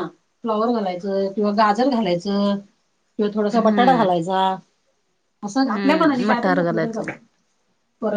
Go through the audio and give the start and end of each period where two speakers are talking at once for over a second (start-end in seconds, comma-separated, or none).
5.7-7.1